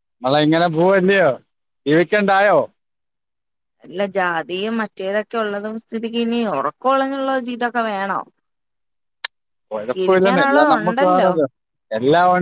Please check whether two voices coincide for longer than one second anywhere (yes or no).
yes